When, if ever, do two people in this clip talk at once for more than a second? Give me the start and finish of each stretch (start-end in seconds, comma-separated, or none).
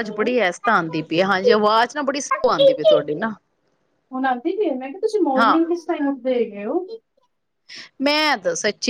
none